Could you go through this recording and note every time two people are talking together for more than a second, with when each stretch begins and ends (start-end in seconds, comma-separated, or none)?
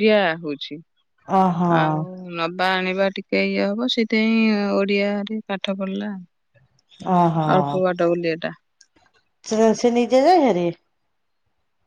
none